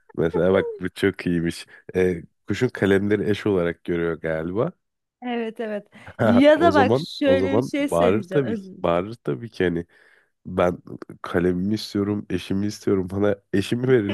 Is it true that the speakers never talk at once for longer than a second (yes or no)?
no